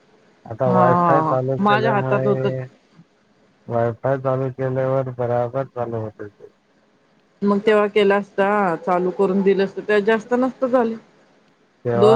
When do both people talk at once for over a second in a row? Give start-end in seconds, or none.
0.7-2.5